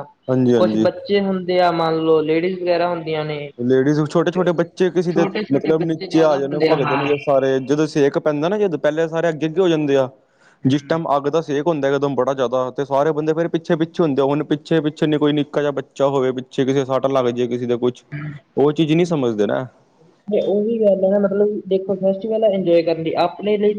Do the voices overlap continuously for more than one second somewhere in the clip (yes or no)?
yes